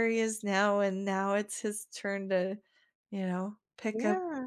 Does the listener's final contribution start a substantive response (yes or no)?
yes